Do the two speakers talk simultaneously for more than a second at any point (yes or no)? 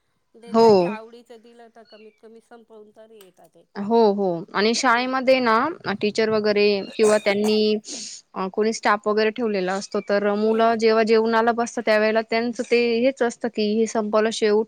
no